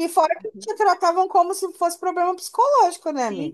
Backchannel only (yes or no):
no